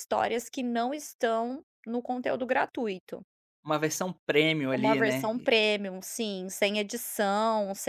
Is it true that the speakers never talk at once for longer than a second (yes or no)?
yes